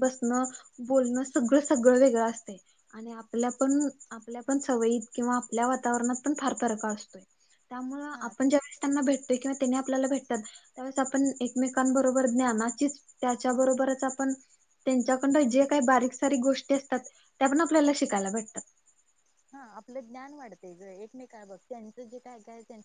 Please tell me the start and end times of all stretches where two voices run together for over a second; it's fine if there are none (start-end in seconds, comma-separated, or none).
none